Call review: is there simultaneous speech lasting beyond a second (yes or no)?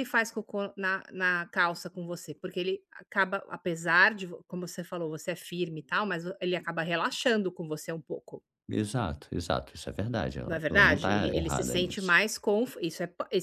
yes